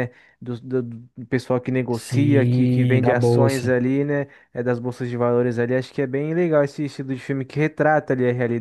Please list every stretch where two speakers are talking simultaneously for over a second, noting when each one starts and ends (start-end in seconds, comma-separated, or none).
1.9-3.8